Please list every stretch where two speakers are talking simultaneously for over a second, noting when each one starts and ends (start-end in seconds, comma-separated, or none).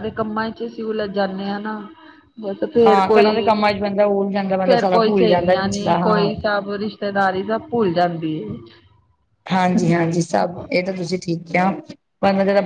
4.6-6.3